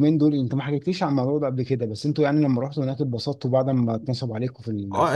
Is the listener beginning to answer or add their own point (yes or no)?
yes